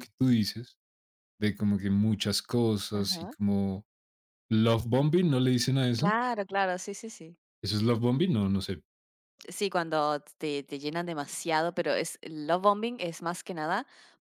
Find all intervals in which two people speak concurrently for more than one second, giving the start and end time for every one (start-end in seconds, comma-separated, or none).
none